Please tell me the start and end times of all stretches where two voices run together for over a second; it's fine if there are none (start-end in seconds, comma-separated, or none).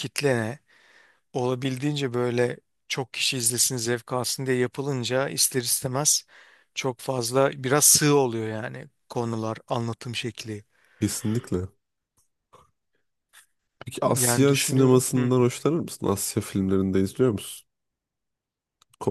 14.0-15.3